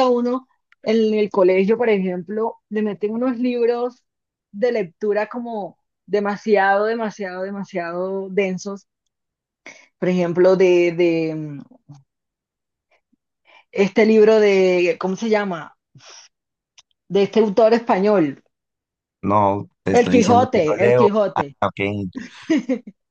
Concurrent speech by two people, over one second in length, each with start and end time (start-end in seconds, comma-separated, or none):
19.9-21.6